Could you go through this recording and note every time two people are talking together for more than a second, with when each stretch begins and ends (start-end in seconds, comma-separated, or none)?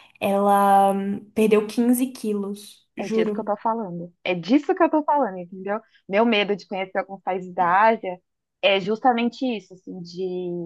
none